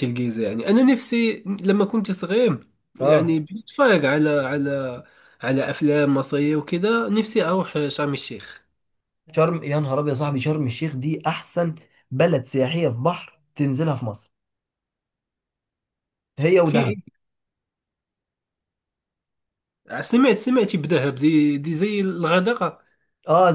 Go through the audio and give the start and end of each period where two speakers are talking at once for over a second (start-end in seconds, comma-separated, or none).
none